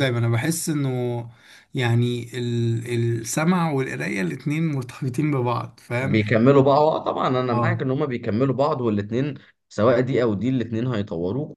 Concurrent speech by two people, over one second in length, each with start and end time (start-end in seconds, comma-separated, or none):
none